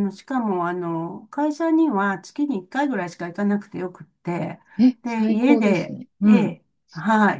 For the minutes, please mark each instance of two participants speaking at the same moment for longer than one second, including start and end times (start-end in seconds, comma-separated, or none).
5.0-6.5